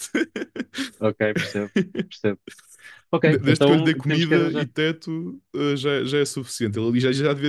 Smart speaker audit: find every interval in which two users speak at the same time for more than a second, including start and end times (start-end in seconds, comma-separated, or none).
3.3-4.7